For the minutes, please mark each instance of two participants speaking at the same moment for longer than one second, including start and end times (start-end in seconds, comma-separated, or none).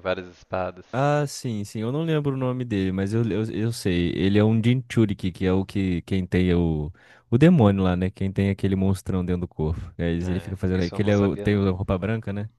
10.2-11.7